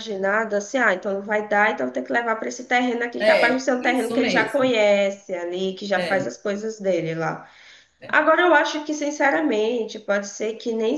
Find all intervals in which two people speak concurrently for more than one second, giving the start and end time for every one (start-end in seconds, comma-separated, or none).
3.2-4.8